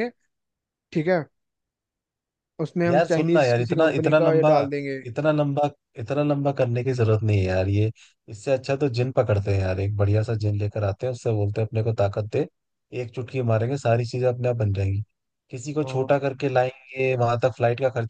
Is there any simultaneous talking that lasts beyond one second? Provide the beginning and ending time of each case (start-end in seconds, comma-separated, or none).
2.9-4.5